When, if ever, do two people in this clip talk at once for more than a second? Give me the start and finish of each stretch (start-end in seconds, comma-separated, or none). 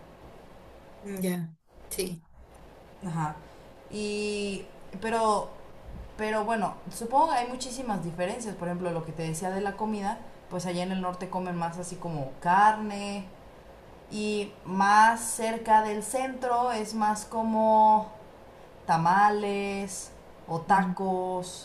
none